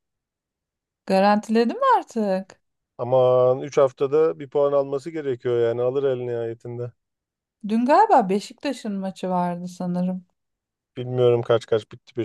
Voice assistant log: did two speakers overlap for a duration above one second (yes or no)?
no